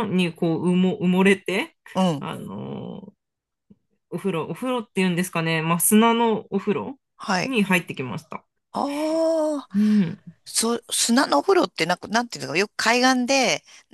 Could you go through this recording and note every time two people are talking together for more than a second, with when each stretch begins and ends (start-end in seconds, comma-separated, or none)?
none